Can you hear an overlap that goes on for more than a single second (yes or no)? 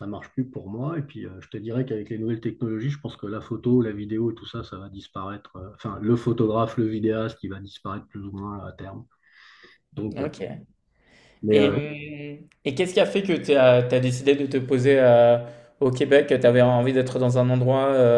no